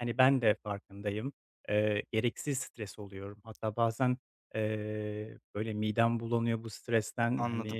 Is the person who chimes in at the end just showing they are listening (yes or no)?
yes